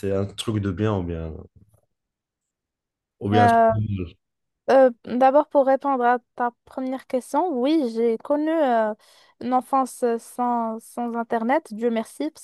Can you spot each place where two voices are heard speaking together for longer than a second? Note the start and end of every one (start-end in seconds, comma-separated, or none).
none